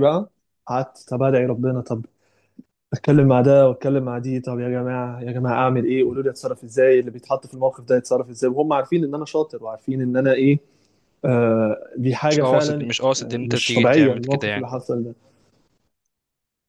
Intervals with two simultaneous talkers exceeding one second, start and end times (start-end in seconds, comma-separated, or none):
12.3-14.7